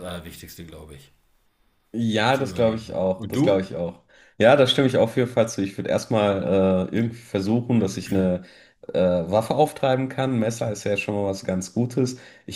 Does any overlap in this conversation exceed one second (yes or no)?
yes